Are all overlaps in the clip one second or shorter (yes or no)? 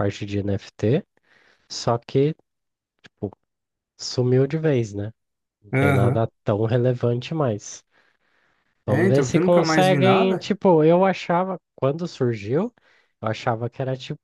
no